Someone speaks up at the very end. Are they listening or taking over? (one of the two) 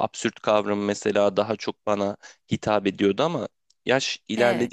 listening